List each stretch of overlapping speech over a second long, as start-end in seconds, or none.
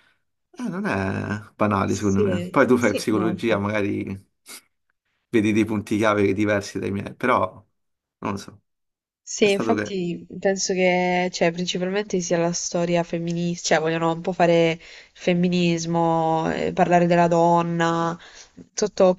1.9-3.7